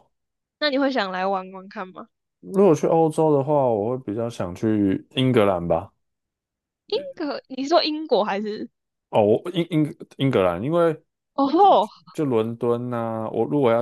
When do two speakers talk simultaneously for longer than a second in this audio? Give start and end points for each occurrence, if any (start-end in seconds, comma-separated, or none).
none